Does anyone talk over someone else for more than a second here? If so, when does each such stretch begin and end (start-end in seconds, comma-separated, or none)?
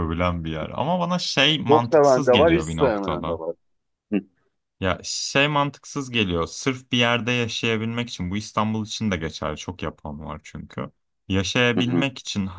1.7-3.4